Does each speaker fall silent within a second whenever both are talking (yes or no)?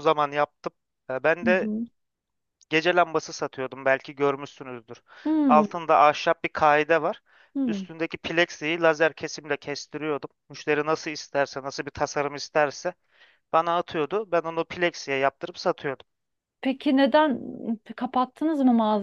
yes